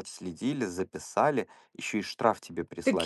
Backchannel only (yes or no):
no